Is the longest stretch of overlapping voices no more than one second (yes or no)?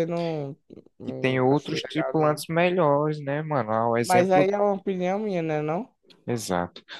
no